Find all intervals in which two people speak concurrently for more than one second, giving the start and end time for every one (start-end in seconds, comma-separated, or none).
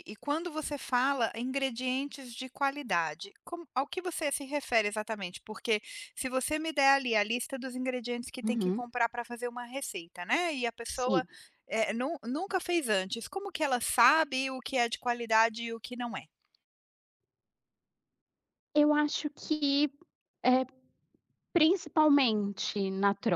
none